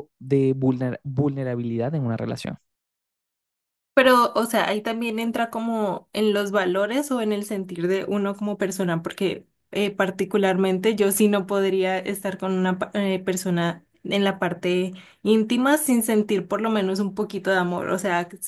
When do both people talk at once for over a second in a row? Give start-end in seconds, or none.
none